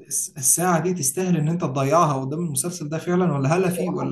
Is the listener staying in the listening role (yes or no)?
yes